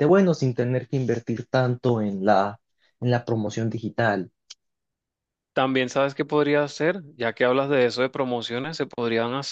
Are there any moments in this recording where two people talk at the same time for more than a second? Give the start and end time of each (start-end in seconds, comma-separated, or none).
none